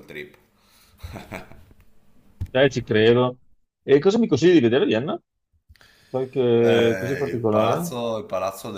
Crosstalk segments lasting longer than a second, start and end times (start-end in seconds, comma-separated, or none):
6.6-7.9